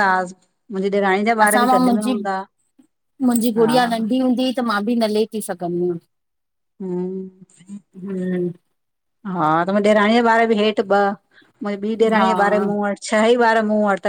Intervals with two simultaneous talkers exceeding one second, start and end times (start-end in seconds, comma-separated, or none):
none